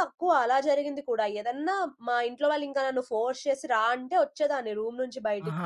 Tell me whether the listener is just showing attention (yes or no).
no